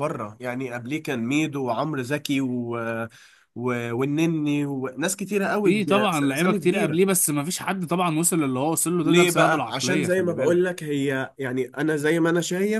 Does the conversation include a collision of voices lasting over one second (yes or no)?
yes